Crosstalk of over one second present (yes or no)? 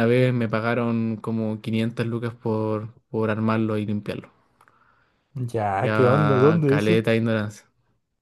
yes